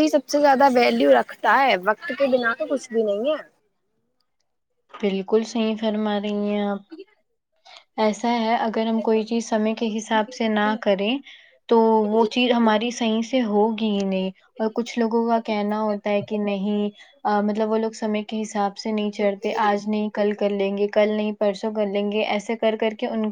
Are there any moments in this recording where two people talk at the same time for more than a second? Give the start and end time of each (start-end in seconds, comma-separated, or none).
none